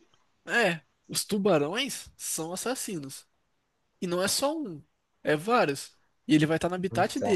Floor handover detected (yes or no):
no